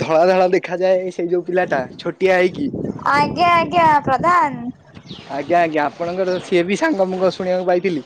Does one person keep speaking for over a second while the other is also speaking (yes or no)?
no